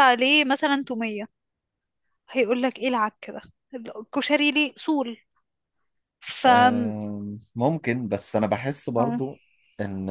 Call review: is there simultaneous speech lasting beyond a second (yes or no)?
no